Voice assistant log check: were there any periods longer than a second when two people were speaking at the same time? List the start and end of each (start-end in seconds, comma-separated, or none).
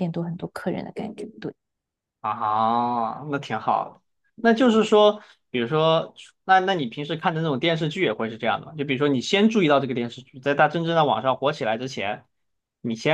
none